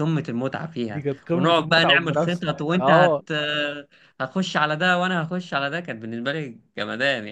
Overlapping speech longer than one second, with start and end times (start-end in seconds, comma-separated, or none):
0.9-3.2